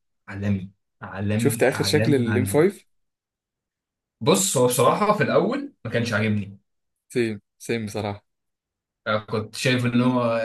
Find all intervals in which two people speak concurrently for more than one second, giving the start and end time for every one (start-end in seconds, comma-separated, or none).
1.4-2.6